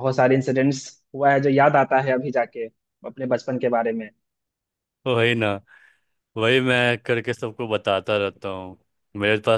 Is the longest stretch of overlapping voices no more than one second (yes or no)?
yes